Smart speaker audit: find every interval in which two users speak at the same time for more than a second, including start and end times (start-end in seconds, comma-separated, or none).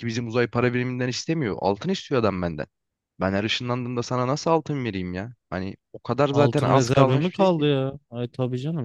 6.3-7.7